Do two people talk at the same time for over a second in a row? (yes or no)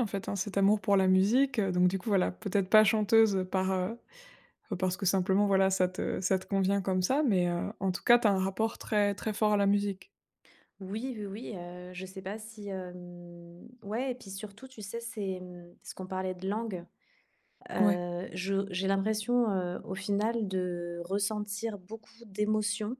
no